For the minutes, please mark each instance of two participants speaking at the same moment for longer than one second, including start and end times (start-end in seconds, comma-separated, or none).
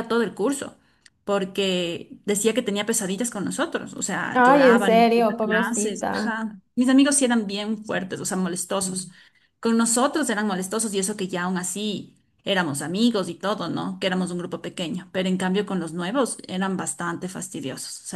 4.3-6.4